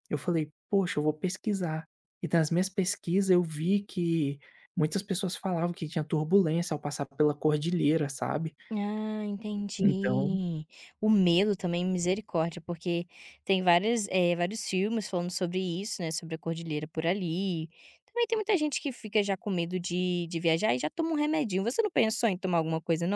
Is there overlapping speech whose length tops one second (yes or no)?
no